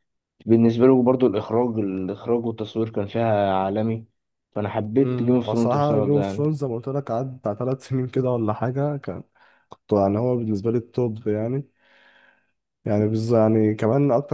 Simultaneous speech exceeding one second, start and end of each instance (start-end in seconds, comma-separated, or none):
5.0-6.4